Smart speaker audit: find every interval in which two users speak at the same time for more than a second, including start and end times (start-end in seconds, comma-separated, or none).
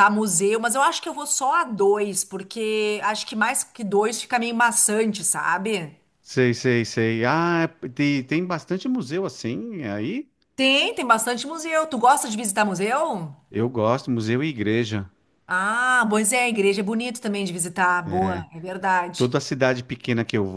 none